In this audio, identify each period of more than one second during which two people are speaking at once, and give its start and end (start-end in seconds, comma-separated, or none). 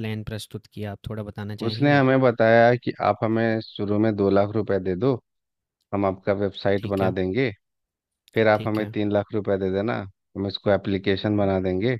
none